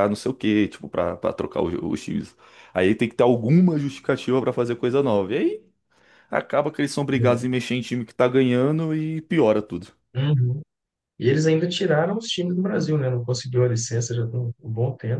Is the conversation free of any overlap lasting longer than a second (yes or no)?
yes